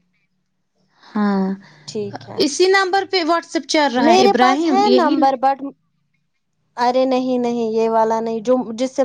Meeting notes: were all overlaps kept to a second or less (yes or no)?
no